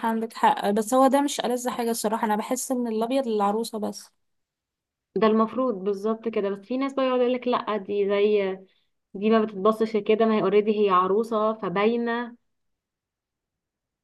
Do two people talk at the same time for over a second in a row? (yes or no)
no